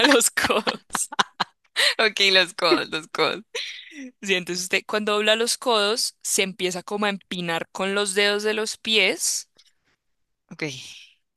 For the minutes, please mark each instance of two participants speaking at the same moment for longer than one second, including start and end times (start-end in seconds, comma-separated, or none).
none